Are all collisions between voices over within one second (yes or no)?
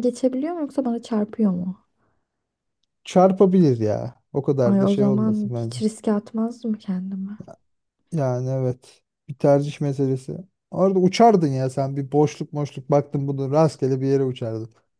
no